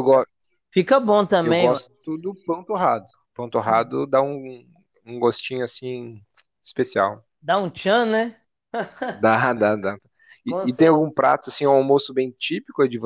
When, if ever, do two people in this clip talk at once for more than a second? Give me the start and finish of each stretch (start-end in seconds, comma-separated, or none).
none